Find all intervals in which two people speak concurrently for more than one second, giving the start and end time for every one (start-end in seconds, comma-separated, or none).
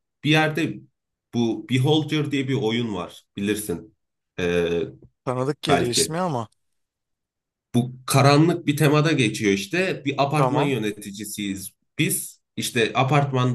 none